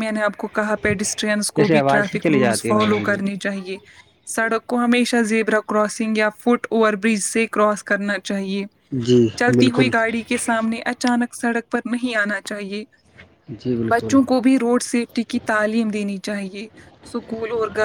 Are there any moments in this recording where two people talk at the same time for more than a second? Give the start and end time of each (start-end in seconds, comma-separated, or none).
1.6-3.2